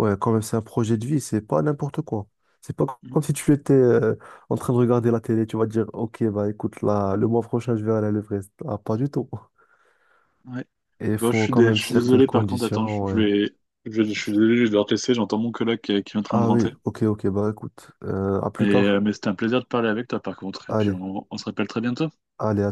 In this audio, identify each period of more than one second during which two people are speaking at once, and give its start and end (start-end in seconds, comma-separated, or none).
11.2-13.2